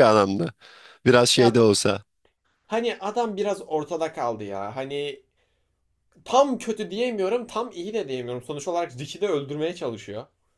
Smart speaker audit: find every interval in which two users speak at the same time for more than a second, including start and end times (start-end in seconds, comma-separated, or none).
none